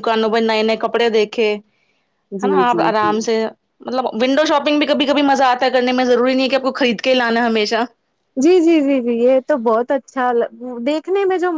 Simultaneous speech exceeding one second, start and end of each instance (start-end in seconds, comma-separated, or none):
none